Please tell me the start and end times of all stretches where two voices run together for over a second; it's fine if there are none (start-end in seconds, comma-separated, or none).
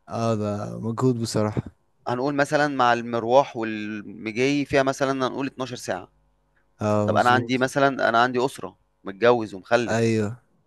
none